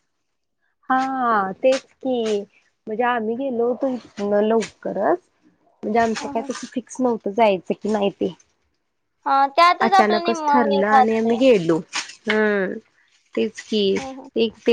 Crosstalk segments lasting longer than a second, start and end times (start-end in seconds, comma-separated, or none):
9.9-11.3